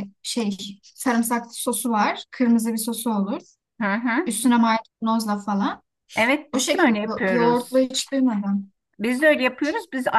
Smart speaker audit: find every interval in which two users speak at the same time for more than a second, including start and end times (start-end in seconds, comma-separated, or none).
6.5-7.9